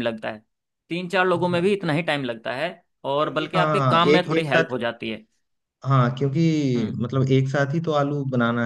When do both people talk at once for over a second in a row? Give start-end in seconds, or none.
3.2-4.7